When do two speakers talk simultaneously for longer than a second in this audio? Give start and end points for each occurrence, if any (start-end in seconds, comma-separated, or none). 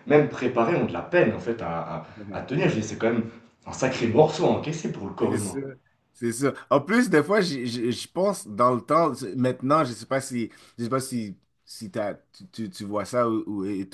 none